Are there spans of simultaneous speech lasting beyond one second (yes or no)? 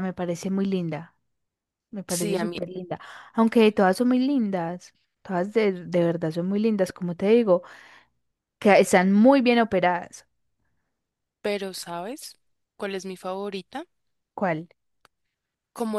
no